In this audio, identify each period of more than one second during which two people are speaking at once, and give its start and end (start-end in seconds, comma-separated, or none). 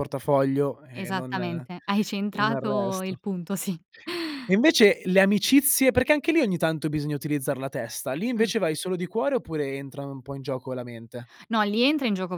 0.9-3.2